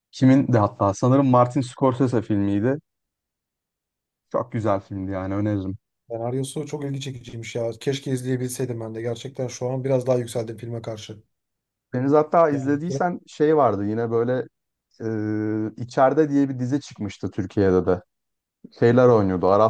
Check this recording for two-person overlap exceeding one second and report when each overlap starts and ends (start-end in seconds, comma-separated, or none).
none